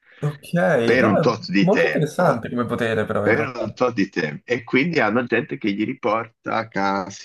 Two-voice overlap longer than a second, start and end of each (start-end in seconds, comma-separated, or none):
1.0-2.5